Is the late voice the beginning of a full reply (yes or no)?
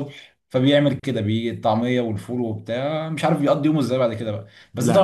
no